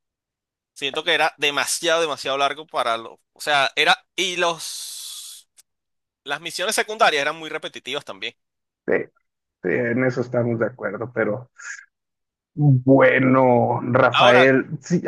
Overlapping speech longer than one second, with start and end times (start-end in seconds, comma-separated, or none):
none